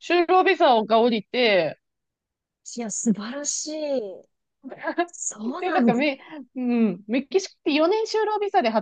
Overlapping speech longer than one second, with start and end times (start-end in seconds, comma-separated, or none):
none